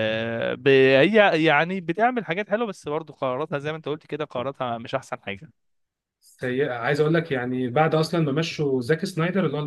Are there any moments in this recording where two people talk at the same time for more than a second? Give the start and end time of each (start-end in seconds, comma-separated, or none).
none